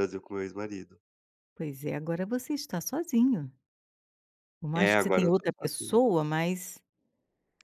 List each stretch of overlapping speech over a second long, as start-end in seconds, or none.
4.7-6.0